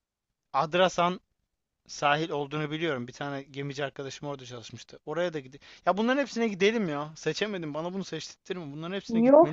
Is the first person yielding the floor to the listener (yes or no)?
yes